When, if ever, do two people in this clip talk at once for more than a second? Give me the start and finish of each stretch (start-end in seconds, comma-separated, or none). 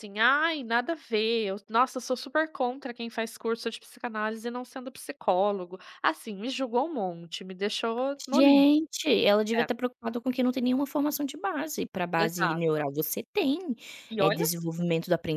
none